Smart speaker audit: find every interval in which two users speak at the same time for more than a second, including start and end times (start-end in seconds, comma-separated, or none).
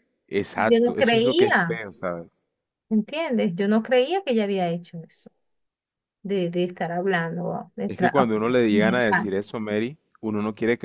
0.6-1.8, 7.9-9.3